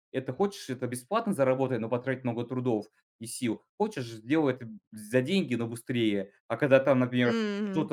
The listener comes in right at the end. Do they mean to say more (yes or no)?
no